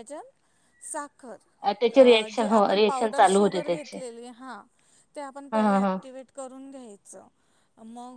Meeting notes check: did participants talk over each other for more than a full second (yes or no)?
yes